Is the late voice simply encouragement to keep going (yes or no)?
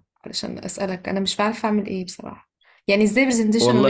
yes